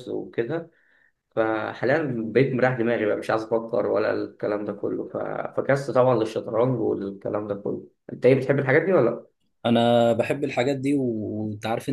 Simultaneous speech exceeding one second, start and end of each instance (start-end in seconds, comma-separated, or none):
none